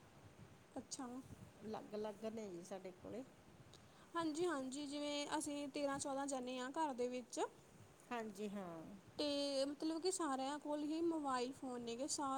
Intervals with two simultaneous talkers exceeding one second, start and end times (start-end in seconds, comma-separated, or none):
none